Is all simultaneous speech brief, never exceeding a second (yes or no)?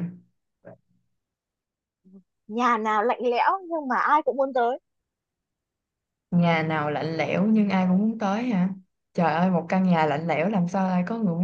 yes